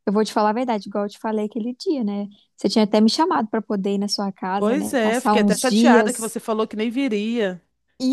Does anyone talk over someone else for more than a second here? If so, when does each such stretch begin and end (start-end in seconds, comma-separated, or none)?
4.6-6.3